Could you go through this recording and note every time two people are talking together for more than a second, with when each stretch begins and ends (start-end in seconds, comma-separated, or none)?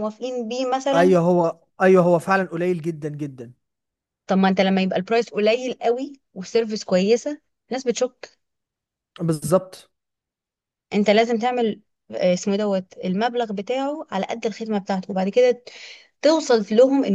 none